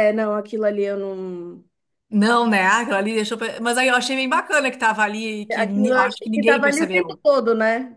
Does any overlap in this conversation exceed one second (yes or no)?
yes